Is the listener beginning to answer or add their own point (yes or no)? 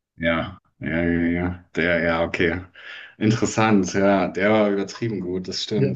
yes